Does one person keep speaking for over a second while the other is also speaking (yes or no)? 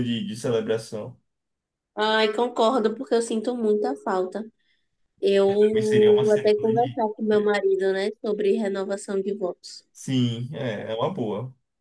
yes